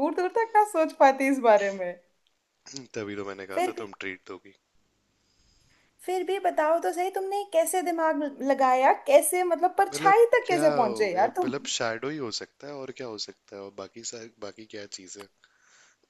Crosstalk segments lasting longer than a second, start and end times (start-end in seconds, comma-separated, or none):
9.9-11.5